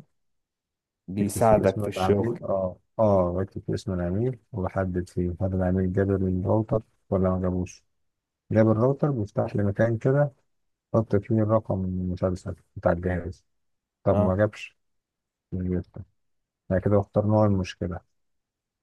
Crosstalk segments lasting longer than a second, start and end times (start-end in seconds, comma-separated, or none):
1.2-2.4